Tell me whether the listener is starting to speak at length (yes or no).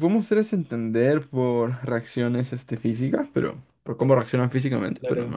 no